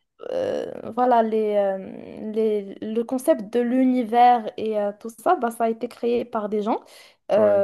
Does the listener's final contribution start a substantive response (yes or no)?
no